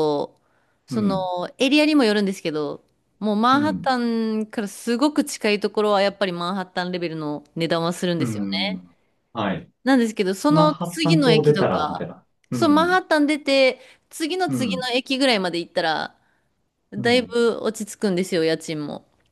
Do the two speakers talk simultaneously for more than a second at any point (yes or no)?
yes